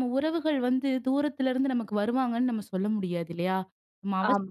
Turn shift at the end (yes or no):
no